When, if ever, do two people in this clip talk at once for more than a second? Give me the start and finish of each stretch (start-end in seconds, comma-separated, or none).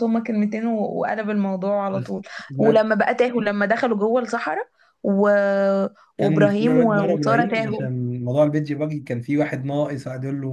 6.2-7.9